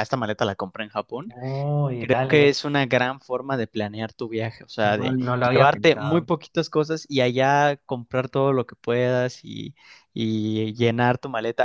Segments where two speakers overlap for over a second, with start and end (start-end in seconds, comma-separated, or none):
4.8-6.3